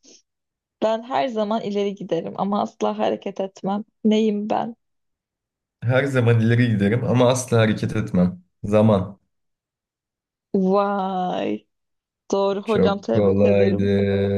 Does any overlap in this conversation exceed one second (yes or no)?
yes